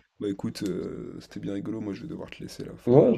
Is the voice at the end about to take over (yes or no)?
yes